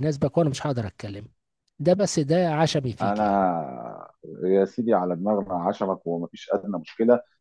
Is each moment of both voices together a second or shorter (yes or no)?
yes